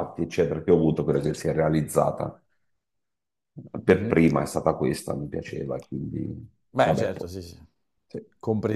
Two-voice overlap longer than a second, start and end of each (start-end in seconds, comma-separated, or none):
none